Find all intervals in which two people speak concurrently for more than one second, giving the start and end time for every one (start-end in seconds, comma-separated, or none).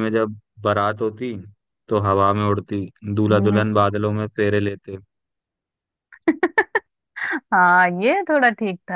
none